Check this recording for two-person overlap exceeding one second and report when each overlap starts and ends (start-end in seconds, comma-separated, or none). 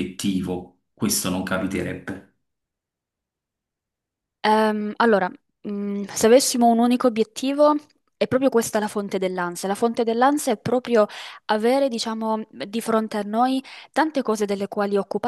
none